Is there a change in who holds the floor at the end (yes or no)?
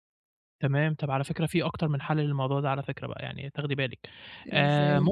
no